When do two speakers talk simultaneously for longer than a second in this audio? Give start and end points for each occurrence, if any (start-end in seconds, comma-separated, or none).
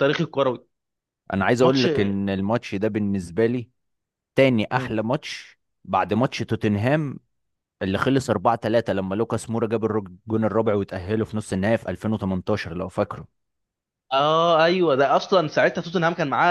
none